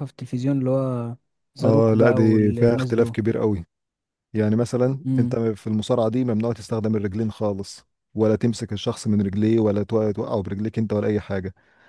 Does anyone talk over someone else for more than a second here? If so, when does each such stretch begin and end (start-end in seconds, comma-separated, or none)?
1.6-3.2